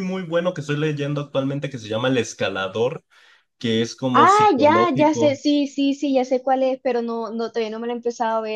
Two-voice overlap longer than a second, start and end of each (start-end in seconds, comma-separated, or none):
4.1-5.4